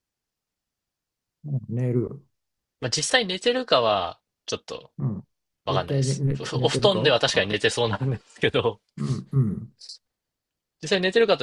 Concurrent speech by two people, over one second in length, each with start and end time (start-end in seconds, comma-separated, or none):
5.7-7.6